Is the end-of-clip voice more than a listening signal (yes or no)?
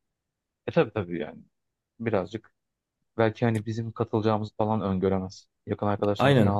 yes